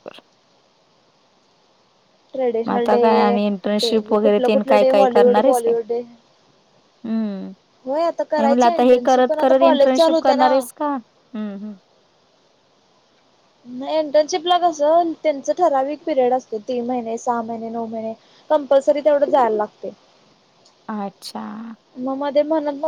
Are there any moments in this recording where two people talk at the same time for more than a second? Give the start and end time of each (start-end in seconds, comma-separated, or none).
3.8-5.7, 8.4-10.8